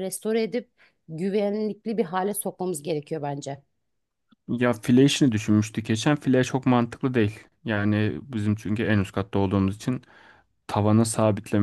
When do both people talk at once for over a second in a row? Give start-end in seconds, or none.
none